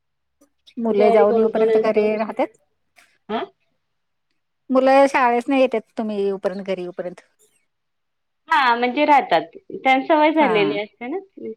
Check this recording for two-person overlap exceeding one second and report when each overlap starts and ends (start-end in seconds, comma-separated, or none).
0.8-2.1